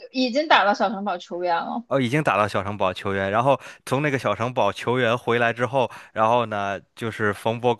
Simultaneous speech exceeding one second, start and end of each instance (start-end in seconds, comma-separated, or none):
none